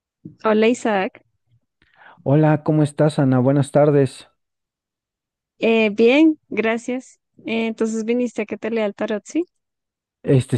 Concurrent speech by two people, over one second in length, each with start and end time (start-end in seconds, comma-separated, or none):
none